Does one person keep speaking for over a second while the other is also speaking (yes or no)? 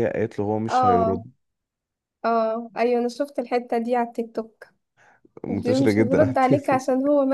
yes